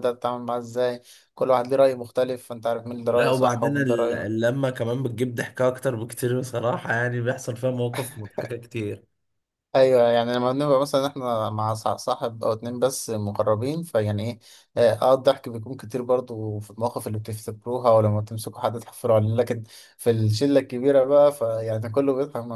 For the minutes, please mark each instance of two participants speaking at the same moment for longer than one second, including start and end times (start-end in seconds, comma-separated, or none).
3.1-4.4